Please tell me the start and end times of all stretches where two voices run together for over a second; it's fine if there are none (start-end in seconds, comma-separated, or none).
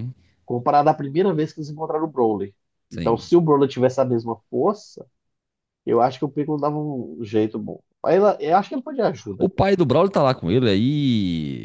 none